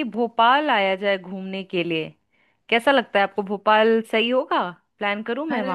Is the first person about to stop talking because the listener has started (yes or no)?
yes